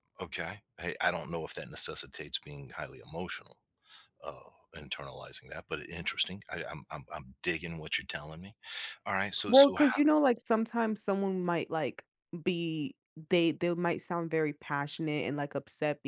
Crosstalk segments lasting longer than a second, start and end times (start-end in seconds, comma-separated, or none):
none